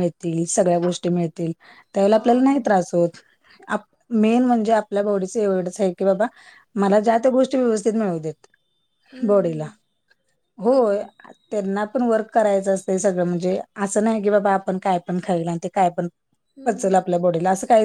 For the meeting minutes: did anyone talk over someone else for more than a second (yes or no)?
no